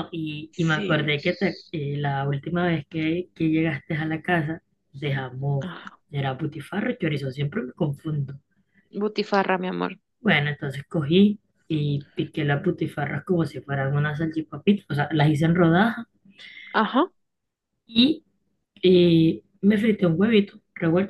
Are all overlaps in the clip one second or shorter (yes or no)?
yes